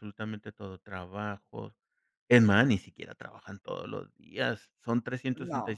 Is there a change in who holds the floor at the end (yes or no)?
no